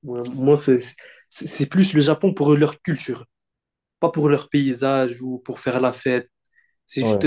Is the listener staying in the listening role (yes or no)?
yes